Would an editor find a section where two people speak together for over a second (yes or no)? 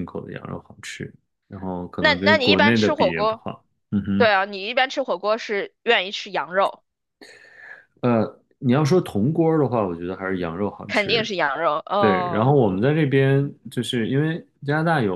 yes